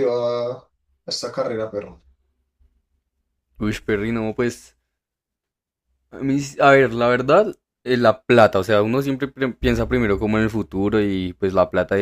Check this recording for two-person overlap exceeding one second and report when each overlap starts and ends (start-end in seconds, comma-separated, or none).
none